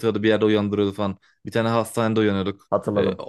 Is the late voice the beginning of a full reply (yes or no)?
no